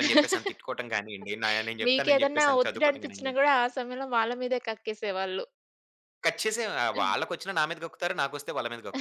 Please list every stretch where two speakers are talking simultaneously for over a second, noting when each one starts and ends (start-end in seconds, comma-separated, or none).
1.9-3.3